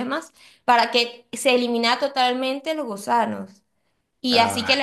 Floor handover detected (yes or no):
no